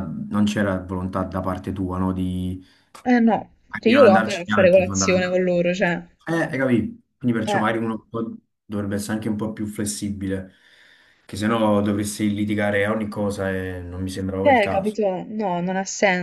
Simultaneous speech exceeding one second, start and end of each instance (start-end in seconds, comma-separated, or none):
3.8-5.5